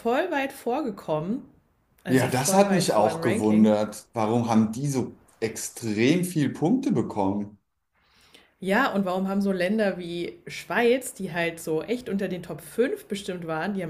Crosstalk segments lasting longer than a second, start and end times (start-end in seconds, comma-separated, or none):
2.1-3.7